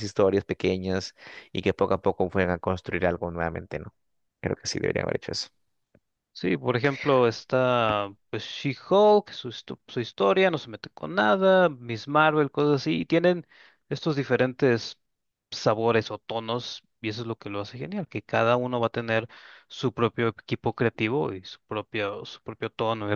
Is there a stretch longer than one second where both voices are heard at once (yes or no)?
no